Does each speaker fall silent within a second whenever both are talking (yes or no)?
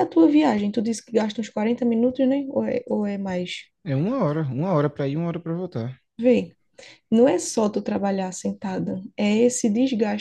yes